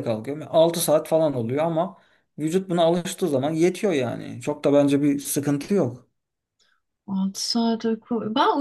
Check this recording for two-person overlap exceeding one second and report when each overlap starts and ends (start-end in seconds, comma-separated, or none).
none